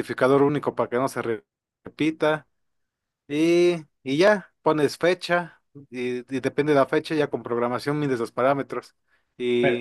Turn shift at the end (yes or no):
no